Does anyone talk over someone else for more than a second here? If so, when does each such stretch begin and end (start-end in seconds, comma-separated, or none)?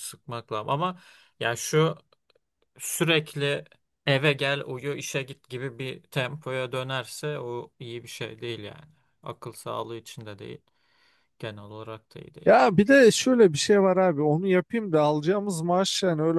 none